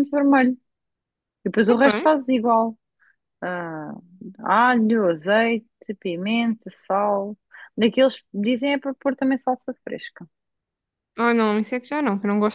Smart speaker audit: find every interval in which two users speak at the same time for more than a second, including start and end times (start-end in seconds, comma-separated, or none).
none